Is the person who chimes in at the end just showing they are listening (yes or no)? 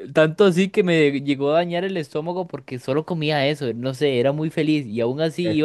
yes